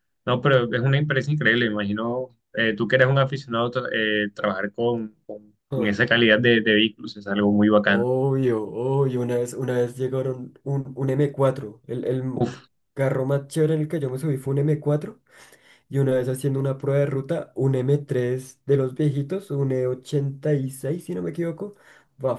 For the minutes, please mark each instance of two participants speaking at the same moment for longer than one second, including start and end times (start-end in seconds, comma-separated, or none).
none